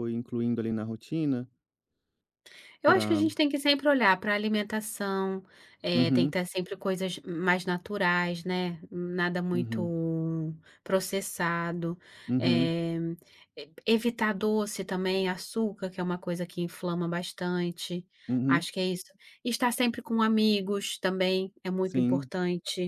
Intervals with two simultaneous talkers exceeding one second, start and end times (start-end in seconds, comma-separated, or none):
none